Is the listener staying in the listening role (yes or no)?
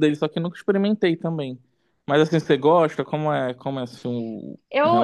no